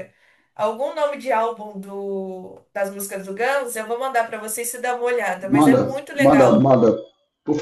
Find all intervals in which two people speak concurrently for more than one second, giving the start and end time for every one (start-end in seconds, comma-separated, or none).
5.4-6.7